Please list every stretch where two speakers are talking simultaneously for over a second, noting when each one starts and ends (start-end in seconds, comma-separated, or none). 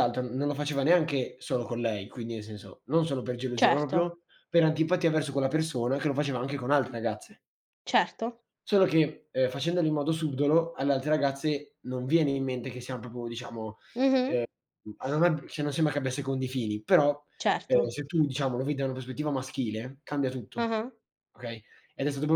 none